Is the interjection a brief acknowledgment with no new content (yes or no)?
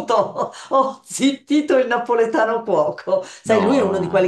yes